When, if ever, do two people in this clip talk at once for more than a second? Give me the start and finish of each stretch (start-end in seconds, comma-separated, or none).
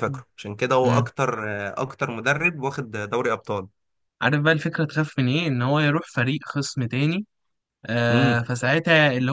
none